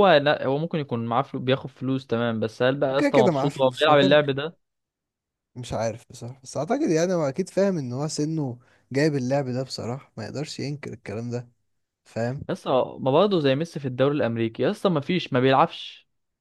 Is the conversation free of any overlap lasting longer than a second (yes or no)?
no